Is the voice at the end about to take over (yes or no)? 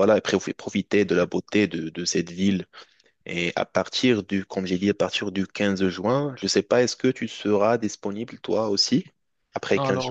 yes